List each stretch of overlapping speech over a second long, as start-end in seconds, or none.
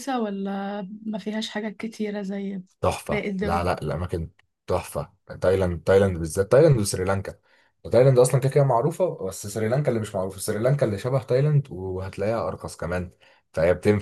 none